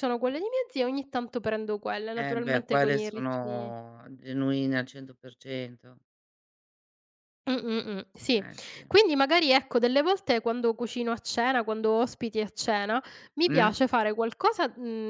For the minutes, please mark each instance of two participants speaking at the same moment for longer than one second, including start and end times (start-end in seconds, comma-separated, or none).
2.1-3.8